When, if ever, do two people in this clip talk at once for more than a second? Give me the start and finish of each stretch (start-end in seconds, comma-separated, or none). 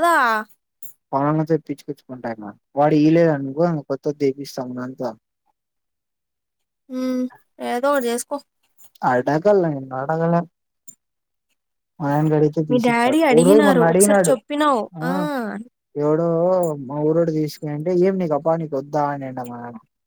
12.7-14.3